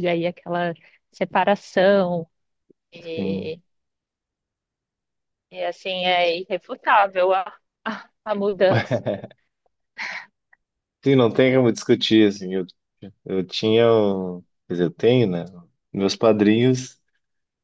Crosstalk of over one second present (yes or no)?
no